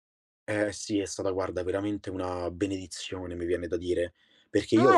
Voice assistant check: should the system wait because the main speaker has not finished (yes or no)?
no